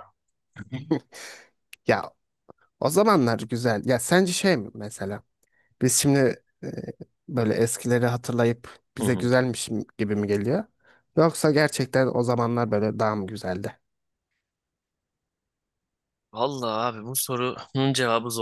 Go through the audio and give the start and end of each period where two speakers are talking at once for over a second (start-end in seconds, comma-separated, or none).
none